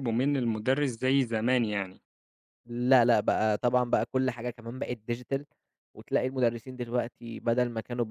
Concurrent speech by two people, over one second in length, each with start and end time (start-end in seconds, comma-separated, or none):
none